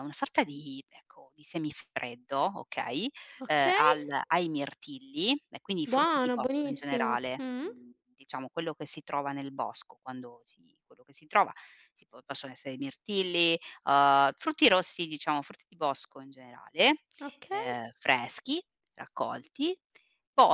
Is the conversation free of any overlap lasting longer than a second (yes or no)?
no